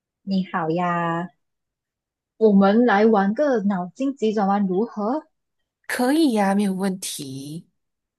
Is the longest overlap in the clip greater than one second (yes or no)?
no